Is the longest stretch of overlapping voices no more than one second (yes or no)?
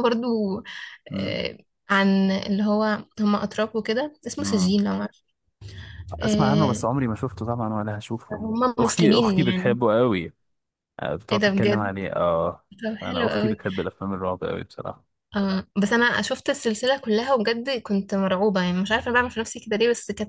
no